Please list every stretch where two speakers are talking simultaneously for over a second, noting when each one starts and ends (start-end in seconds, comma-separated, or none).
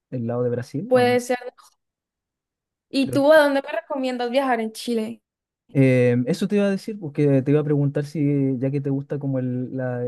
none